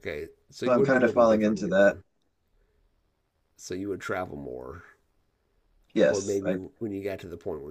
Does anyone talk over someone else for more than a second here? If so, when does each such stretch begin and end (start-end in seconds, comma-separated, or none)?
0.6-2.0